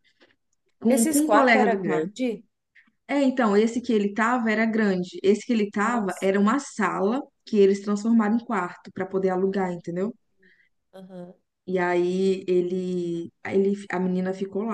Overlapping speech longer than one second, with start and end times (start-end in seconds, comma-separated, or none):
0.9-2.1